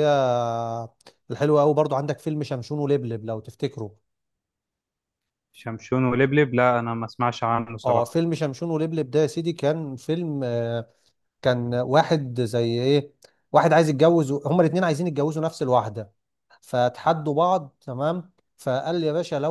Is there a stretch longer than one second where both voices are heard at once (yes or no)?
no